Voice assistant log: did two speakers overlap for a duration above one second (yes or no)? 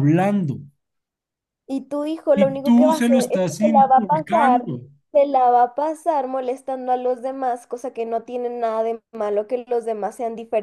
yes